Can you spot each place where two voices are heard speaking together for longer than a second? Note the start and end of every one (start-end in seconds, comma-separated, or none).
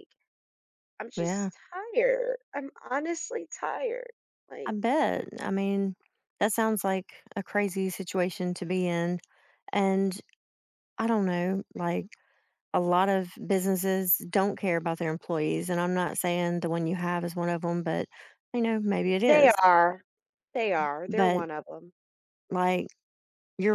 none